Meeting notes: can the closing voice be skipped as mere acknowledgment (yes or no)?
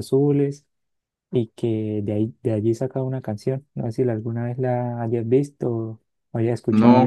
no